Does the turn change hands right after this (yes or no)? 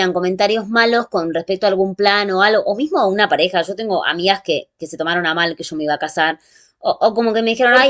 no